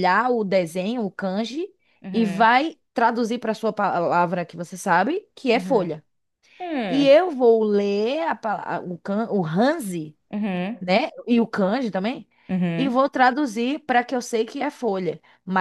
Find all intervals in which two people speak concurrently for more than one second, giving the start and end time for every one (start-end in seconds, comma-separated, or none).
none